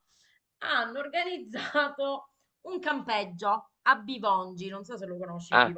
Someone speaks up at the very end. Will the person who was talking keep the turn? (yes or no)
no